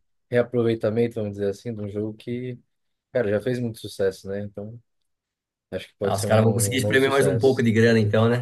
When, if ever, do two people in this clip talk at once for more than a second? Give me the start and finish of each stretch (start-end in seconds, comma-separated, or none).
6.0-7.7